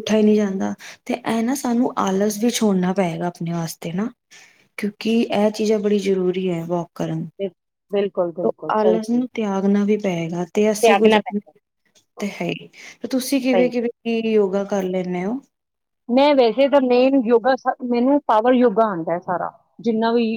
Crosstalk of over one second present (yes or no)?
no